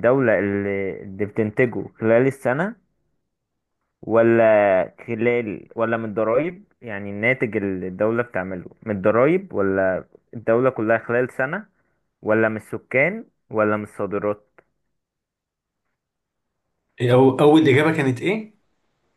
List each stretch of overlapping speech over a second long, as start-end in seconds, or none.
none